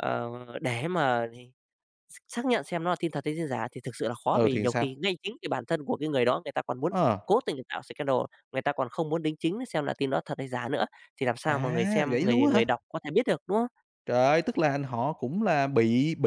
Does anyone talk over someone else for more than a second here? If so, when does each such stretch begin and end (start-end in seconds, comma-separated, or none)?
11.5-12.7